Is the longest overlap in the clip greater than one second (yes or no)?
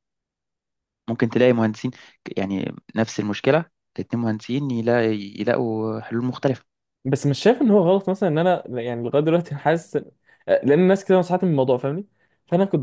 no